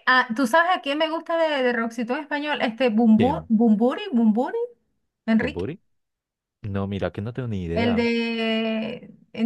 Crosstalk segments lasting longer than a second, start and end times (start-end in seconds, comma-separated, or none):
none